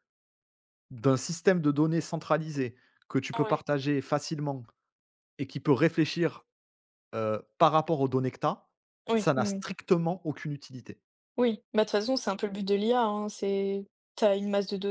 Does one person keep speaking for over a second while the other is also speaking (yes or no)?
no